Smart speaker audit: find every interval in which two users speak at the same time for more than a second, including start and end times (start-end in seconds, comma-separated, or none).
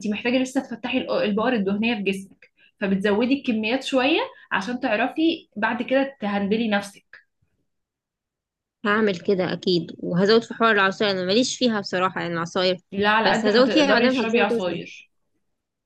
13.2-14.8